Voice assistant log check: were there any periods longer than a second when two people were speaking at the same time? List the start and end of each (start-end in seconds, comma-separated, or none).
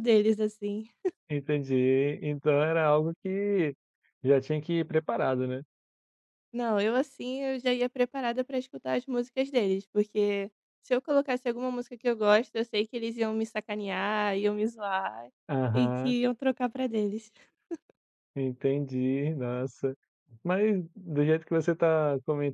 none